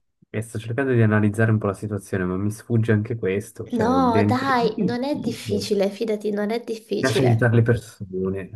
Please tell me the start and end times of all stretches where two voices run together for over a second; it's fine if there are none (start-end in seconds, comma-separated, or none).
3.7-5.7